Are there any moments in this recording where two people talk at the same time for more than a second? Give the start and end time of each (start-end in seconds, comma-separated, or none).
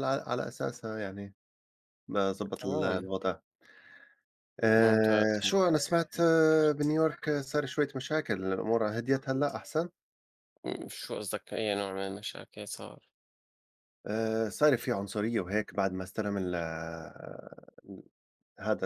4.8-6.3